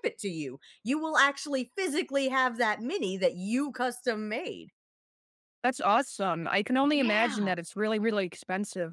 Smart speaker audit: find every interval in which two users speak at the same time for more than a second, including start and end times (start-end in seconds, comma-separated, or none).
none